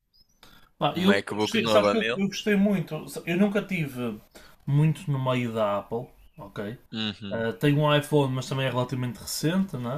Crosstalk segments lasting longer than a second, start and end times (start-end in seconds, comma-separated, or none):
0.9-2.2